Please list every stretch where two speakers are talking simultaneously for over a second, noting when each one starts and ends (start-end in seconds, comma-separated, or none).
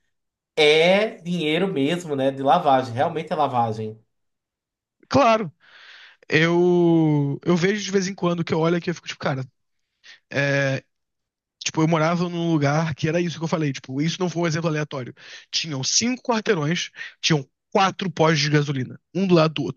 none